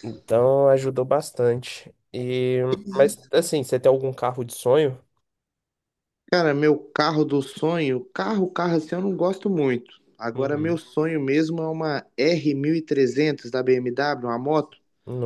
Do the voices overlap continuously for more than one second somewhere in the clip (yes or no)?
no